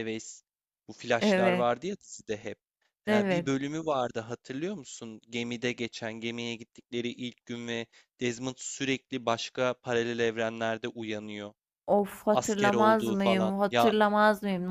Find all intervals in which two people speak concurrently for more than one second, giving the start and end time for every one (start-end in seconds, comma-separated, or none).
12.3-13.9